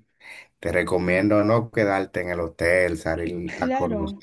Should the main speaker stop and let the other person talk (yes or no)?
yes